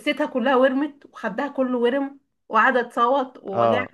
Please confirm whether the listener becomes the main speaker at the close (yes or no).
yes